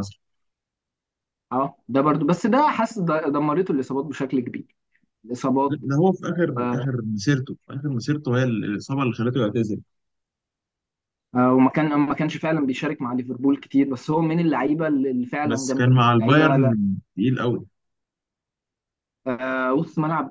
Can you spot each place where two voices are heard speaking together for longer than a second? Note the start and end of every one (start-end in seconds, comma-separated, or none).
15.5-16.7